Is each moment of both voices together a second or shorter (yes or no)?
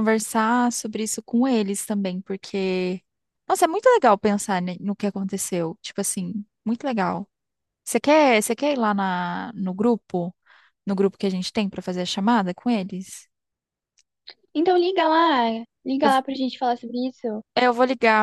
yes